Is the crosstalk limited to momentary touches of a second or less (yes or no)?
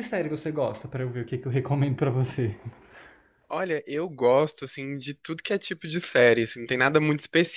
yes